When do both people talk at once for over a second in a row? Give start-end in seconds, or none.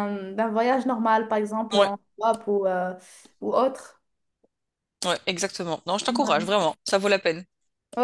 none